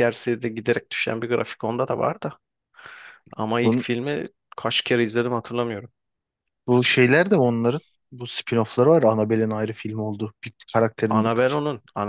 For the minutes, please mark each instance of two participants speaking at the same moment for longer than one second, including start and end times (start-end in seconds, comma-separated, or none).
none